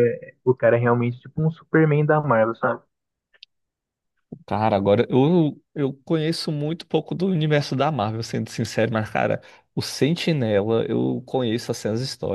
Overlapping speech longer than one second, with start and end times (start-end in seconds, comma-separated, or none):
none